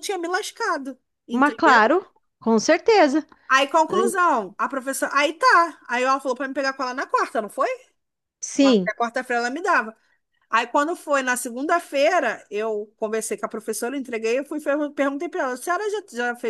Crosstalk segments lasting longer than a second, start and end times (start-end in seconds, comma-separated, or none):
none